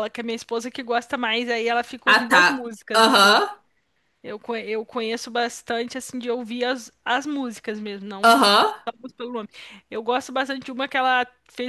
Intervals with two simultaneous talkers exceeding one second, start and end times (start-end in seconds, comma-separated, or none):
2.0-3.4